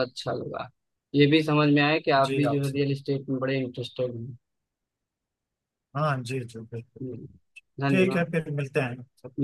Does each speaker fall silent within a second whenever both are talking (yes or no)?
yes